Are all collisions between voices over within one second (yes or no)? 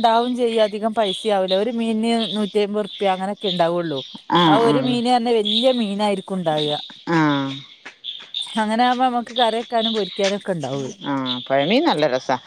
yes